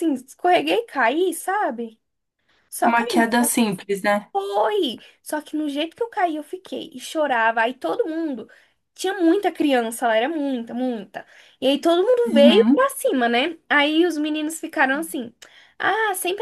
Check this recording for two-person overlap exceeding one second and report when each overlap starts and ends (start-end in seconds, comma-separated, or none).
none